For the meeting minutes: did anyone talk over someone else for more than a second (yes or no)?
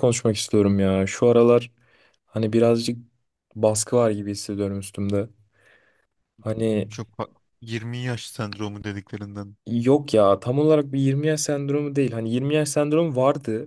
no